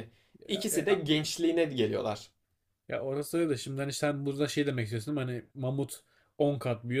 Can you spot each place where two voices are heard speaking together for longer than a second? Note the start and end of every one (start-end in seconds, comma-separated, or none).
none